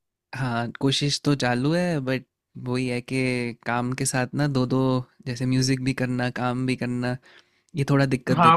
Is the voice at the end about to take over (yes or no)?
yes